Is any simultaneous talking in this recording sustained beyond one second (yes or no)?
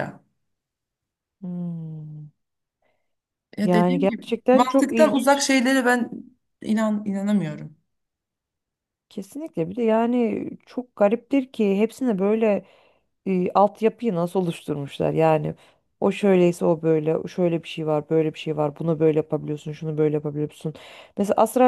yes